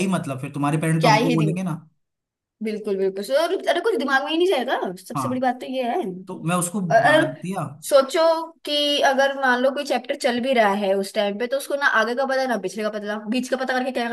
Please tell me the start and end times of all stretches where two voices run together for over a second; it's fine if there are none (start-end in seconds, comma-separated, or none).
none